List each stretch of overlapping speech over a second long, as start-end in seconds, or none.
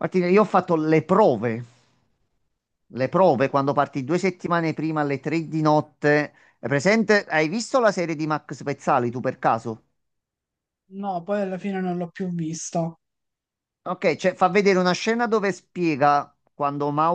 none